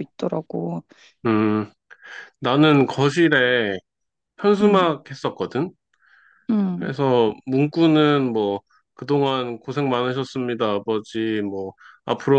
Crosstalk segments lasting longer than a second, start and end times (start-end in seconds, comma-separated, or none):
none